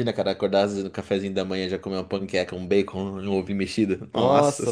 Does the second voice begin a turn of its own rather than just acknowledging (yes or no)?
yes